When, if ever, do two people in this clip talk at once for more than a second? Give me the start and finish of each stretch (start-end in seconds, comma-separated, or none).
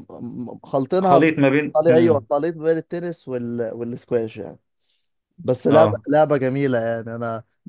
1.0-2.2